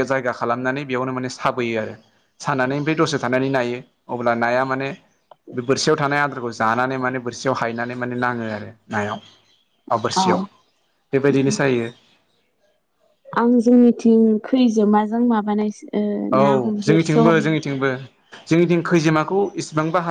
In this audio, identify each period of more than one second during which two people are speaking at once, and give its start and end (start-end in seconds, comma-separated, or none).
16.4-17.6